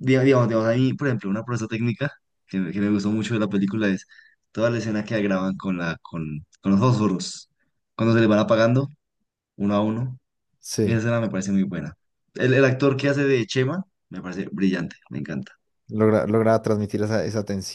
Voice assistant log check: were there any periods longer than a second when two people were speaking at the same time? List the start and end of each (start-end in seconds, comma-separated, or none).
none